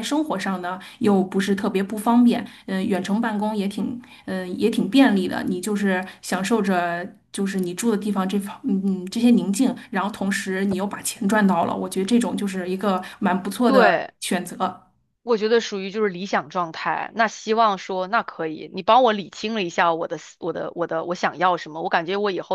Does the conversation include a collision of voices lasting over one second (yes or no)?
no